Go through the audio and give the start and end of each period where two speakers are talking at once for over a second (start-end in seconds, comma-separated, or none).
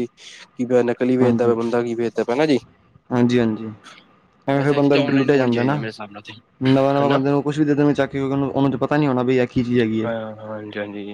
4.5-5.8